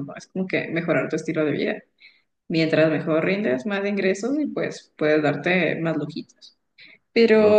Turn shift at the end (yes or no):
no